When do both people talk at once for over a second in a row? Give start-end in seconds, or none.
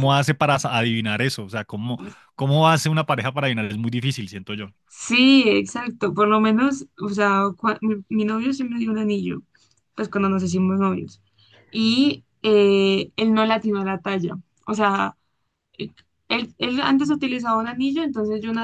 none